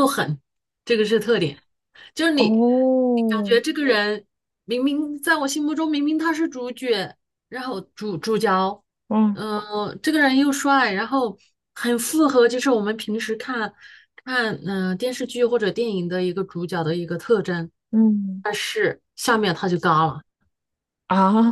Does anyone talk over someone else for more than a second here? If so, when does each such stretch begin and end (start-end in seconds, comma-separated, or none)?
2.3-3.6